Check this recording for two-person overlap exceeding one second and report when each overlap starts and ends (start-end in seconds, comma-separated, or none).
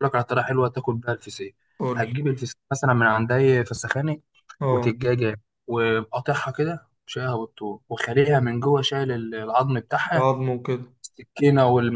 none